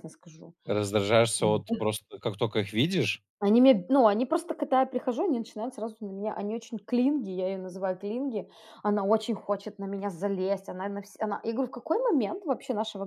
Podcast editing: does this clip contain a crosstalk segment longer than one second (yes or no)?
no